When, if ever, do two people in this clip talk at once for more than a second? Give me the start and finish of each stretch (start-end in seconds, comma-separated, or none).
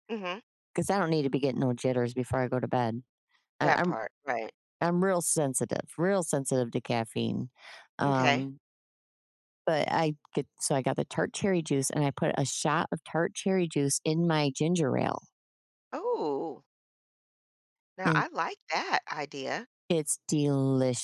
none